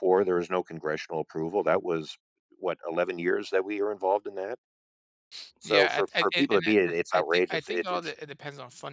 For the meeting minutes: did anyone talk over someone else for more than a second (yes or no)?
yes